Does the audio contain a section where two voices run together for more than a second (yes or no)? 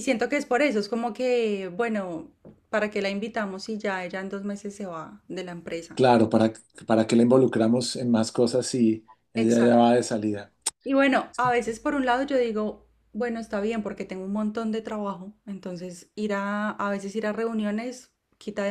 no